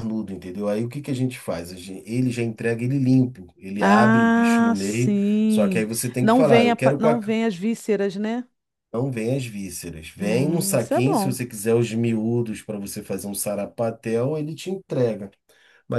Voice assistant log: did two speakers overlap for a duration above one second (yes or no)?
yes